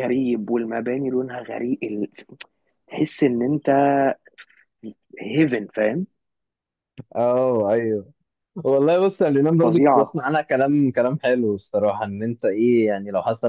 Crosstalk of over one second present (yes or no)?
no